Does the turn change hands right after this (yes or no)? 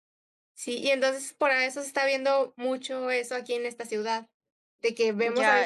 yes